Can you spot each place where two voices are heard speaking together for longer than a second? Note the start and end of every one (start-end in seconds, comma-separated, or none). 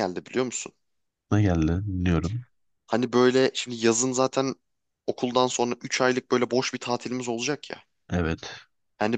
none